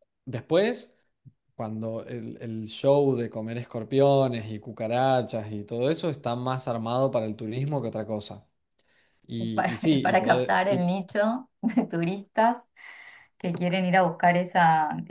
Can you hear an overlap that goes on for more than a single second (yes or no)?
yes